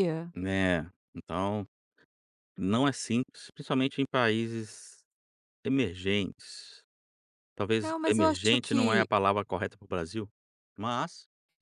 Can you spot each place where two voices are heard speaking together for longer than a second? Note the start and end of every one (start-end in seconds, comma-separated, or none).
7.8-9.1